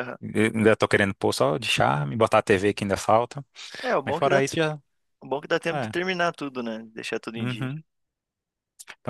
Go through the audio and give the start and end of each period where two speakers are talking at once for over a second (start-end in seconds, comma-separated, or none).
none